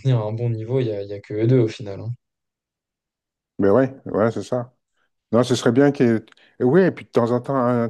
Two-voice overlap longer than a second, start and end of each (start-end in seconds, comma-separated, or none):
none